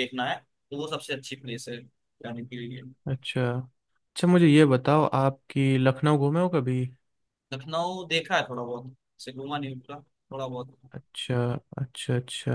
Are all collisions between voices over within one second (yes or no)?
yes